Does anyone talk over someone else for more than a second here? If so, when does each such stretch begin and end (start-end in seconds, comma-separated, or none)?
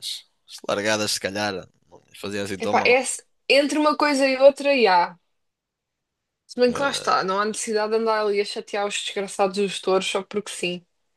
none